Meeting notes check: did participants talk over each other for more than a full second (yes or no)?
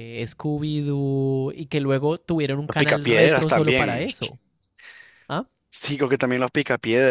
yes